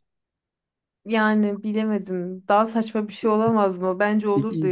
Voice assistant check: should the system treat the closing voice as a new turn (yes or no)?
yes